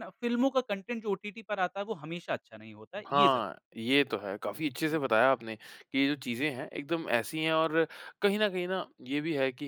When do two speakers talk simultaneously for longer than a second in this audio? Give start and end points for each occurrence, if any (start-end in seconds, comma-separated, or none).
none